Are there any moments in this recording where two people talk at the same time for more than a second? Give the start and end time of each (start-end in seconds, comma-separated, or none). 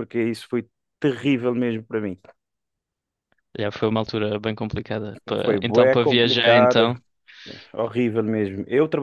5.4-6.9